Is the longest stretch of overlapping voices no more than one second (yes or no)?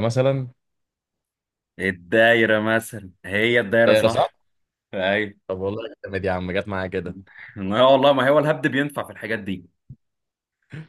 yes